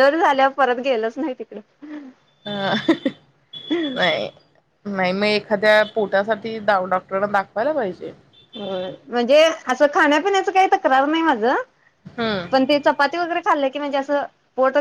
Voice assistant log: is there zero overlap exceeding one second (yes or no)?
yes